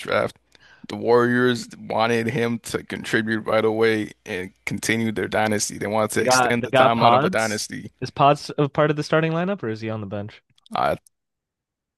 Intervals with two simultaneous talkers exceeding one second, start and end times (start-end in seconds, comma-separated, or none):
6.2-7.6